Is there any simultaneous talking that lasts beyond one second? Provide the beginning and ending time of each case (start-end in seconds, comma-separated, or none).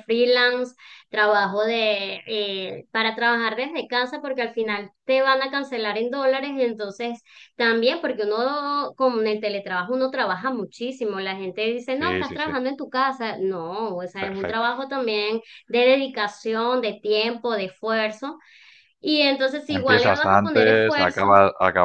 19.7-21.3